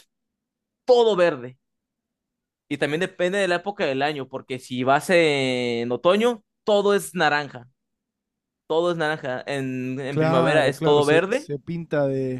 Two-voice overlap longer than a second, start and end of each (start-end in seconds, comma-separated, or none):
10.1-11.5